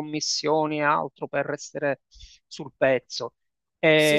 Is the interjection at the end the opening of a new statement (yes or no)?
no